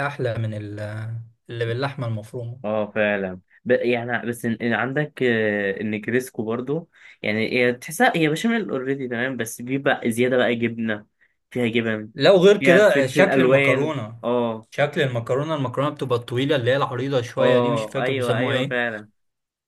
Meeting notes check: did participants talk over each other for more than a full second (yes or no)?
yes